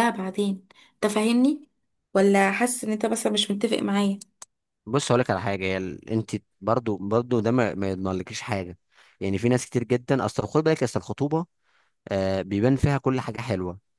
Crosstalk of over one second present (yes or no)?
no